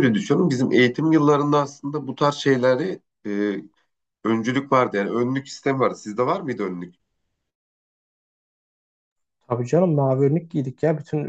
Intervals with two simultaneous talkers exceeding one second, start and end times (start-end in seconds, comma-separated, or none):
none